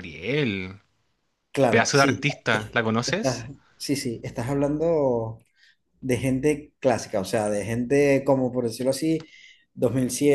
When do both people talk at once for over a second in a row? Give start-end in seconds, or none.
1.7-3.5